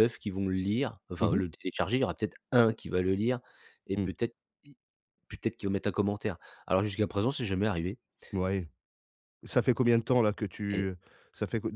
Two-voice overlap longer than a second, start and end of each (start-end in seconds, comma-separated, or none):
none